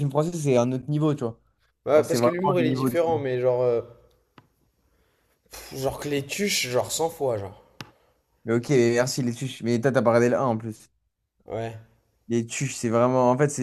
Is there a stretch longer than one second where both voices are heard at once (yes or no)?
yes